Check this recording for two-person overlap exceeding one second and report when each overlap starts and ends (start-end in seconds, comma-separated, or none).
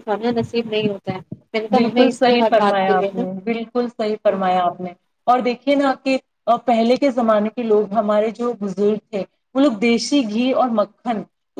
1.8-3.2